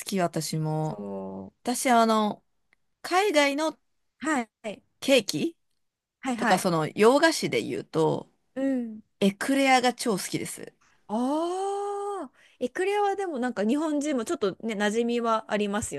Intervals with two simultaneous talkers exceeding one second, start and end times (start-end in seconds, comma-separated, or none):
none